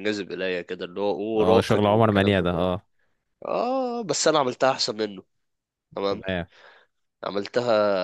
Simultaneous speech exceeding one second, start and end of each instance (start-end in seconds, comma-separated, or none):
1.4-2.7